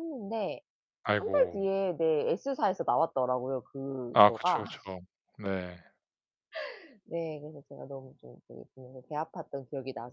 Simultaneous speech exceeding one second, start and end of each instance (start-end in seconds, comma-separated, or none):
none